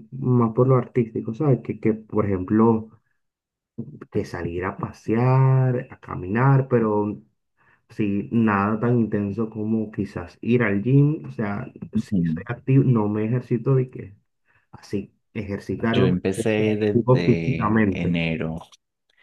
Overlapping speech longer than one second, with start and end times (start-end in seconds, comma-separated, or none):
15.9-18.2